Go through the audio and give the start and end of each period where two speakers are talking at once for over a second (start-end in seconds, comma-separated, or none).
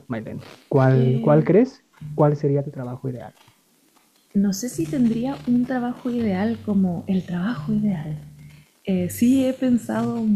none